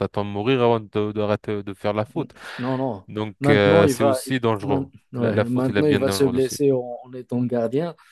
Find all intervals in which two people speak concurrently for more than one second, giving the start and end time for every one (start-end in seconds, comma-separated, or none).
3.4-6.5